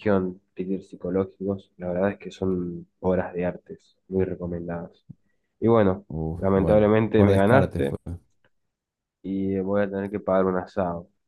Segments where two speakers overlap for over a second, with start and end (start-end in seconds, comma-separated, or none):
6.1-8.0